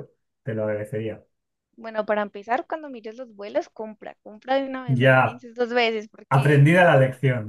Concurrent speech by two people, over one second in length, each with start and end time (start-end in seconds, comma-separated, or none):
none